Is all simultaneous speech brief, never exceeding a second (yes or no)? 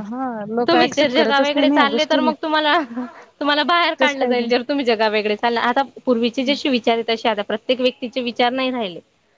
no